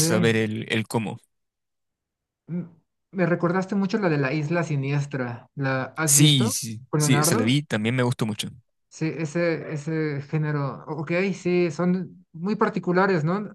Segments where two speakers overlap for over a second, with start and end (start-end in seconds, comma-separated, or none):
6.1-7.6